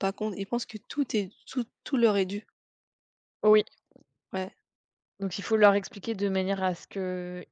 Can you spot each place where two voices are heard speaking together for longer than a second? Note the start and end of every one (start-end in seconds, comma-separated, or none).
none